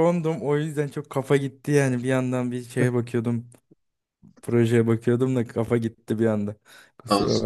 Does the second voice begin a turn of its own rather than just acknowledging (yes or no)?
yes